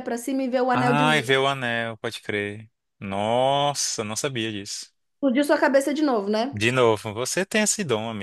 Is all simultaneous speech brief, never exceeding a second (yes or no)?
yes